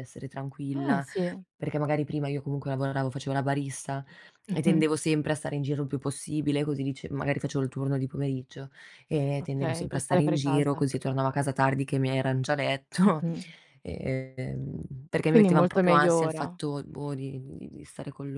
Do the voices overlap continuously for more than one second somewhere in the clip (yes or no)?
yes